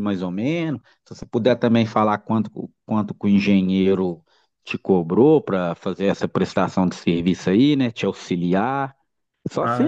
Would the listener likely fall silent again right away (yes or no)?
no